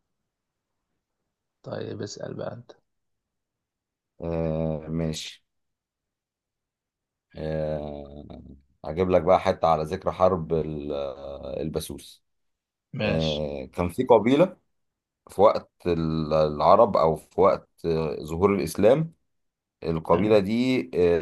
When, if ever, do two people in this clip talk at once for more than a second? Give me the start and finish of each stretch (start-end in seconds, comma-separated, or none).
none